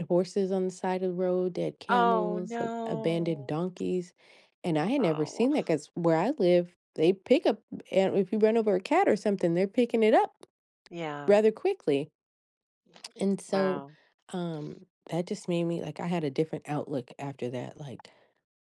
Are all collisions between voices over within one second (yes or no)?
no